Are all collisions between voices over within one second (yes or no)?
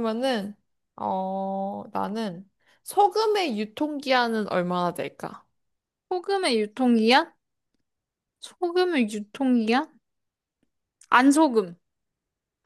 yes